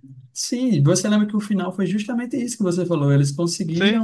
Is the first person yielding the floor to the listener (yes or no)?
no